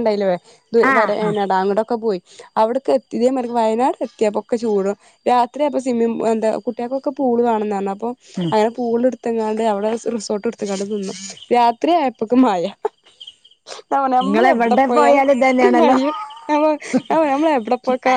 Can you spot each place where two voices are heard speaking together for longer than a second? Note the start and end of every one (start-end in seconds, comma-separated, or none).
14.3-16.0